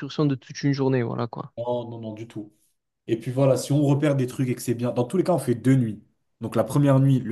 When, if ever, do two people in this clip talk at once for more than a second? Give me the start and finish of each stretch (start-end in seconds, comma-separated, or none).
none